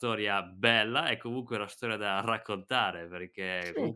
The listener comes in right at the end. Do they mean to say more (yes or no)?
no